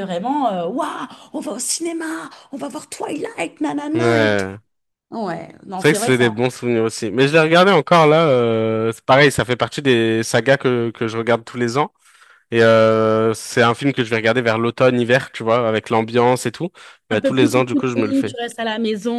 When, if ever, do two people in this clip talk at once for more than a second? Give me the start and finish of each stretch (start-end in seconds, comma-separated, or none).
17.1-18.4